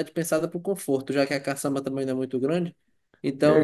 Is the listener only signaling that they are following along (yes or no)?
yes